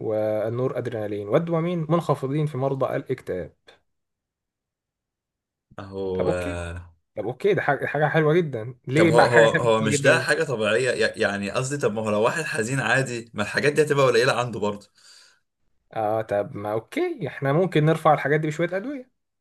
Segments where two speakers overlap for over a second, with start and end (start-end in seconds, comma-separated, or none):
8.9-10.3